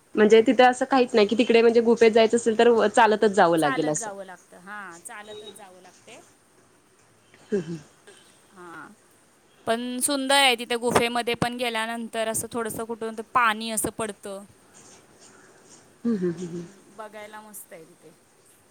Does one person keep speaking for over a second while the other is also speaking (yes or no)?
no